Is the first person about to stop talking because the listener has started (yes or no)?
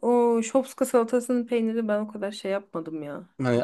yes